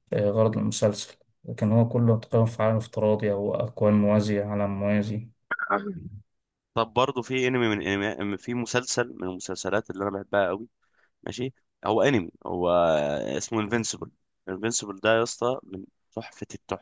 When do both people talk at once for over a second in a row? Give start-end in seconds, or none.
none